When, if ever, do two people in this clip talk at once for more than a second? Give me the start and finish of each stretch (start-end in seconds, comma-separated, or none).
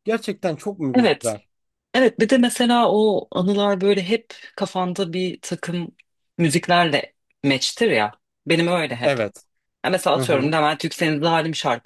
none